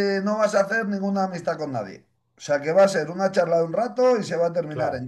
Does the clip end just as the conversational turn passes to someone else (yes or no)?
no